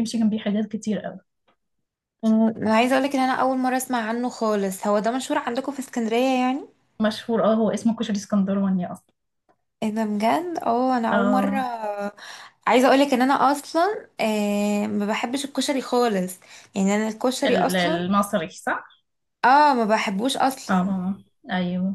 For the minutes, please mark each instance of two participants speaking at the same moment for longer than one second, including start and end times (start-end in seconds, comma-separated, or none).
none